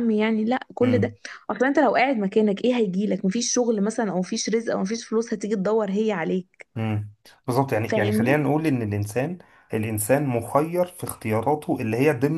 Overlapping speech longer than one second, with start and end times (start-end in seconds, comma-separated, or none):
none